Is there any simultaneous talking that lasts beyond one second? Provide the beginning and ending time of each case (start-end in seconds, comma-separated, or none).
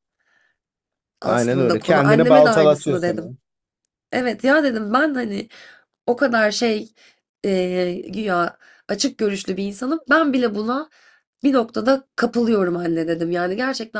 1.2-3.2